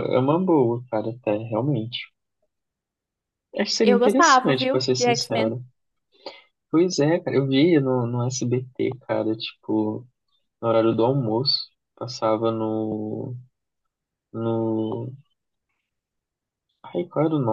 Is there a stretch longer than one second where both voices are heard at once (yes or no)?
yes